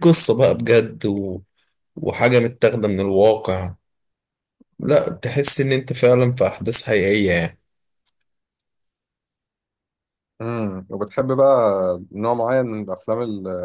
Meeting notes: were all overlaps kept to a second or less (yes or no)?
yes